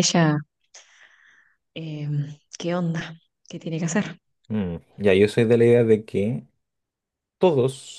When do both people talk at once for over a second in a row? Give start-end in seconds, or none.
none